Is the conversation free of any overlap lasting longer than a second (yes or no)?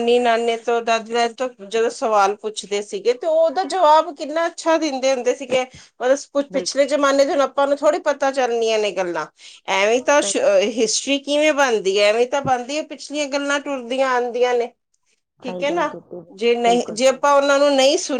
yes